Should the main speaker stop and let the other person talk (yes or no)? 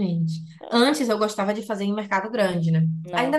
no